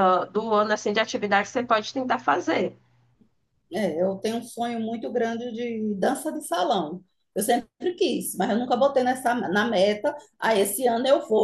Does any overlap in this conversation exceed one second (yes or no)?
no